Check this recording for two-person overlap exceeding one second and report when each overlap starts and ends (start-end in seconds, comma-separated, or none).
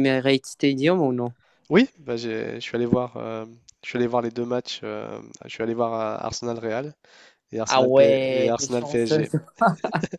7.7-9.2